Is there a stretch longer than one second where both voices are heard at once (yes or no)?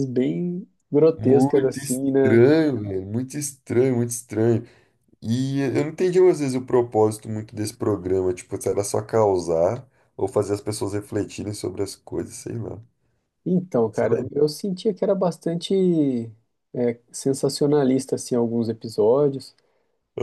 yes